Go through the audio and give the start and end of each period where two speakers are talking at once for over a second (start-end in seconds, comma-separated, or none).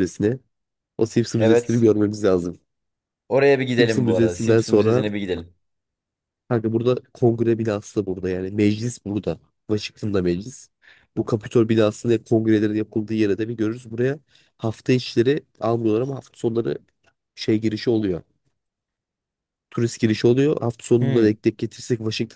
3.8-5.0